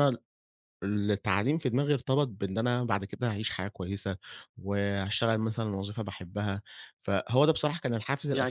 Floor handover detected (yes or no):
yes